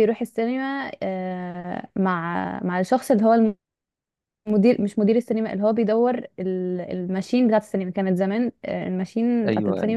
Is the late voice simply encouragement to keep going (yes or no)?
yes